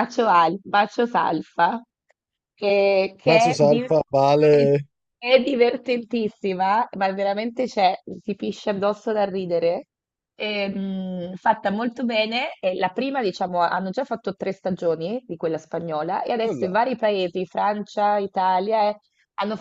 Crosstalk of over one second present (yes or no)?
no